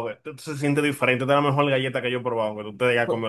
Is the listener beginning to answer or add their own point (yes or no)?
yes